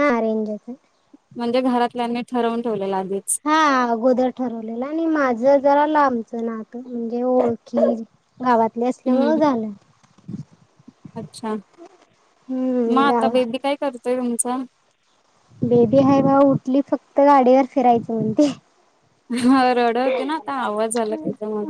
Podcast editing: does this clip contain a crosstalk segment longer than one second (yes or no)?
no